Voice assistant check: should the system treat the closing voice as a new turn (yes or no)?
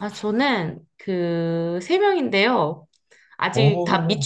no